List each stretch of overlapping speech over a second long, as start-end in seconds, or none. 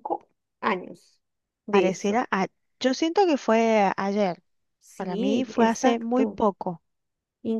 5.0-6.4